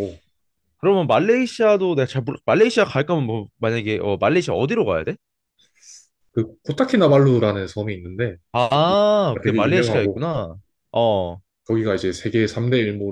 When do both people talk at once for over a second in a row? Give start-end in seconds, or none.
8.5-10.2